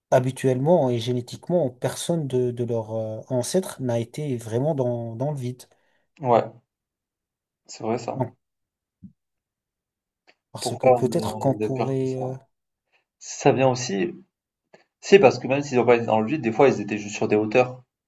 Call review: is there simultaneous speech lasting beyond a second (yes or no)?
yes